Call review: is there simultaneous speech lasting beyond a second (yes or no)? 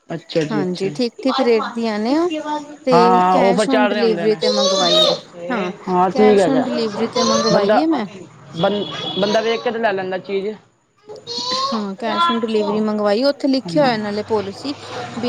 yes